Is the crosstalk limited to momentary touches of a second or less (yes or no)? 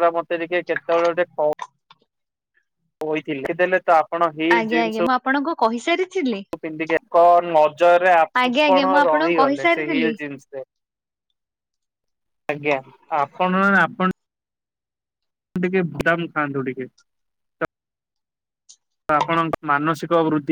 no